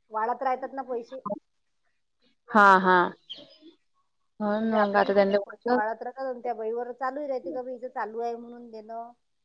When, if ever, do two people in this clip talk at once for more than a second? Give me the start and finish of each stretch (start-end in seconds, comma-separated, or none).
4.5-5.8